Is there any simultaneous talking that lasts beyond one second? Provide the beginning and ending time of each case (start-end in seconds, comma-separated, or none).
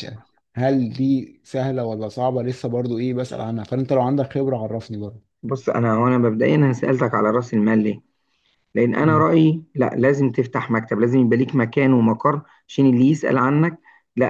none